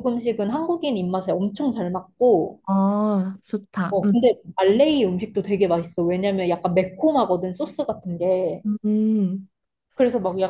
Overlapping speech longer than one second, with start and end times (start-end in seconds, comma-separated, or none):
none